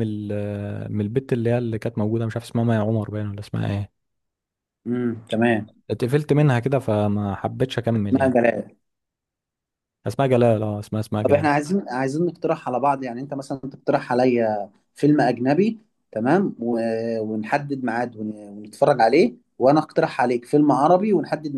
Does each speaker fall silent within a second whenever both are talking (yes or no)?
yes